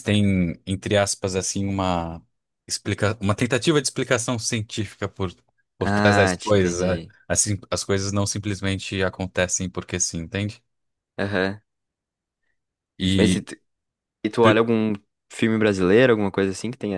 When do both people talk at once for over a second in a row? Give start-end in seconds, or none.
5.8-7.1